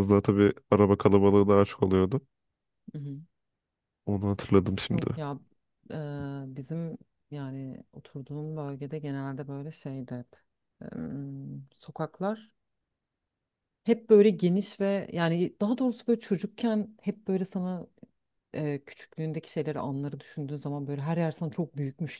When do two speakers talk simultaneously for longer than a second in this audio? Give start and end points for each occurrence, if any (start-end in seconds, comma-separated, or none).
none